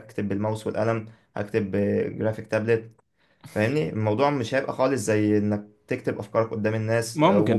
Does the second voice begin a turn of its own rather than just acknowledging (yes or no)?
no